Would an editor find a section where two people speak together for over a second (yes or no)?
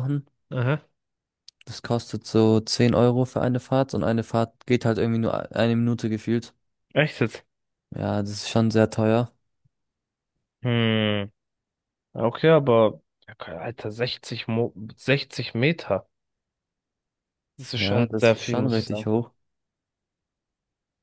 yes